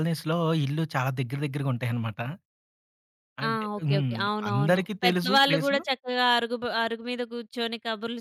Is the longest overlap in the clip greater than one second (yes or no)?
yes